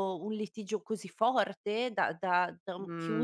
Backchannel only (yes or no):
no